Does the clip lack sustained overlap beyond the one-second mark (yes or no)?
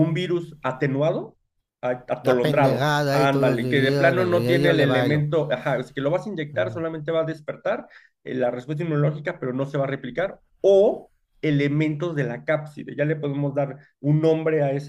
no